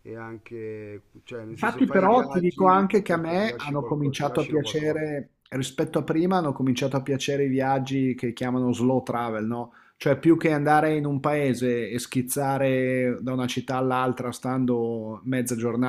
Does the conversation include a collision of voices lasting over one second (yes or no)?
yes